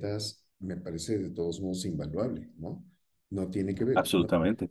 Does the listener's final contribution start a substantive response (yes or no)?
yes